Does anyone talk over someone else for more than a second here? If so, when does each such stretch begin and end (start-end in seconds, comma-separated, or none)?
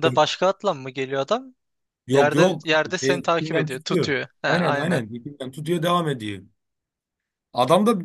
2.1-5.0